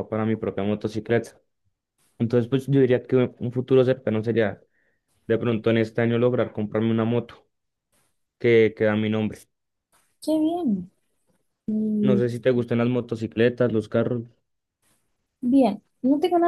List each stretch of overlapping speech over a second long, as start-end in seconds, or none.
none